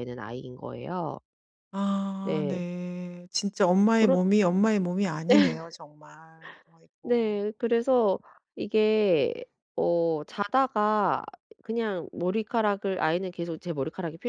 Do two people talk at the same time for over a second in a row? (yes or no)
no